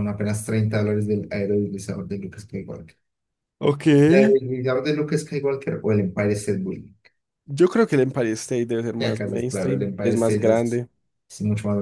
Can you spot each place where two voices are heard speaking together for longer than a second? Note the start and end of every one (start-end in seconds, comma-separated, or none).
9.0-10.8